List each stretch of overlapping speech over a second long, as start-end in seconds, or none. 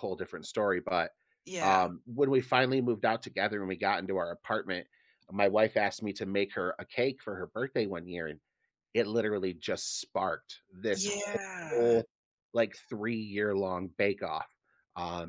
none